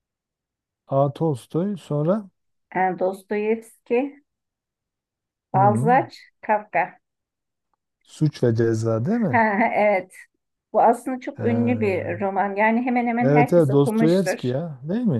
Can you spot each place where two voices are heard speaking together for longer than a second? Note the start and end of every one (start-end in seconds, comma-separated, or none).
13.2-14.5